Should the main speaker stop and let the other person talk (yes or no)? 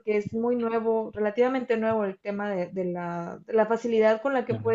no